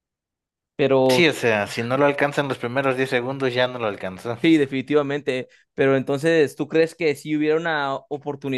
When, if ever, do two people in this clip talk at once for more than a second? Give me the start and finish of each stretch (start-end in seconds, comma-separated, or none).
none